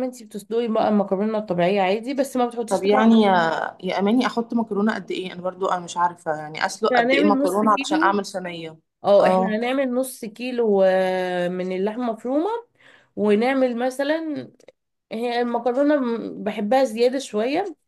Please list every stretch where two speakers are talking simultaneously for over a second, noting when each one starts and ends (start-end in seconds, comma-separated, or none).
6.9-8.2